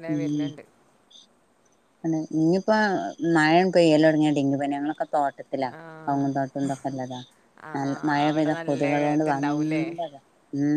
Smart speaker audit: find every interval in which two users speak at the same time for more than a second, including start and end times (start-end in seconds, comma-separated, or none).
7.8-9.8